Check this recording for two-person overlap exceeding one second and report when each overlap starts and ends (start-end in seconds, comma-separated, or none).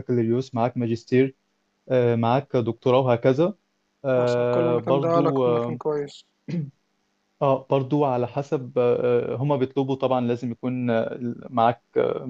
4.2-5.8